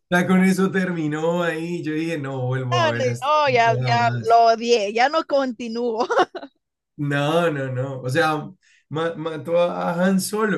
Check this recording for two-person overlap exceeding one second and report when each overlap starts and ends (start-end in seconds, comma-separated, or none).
2.7-4.4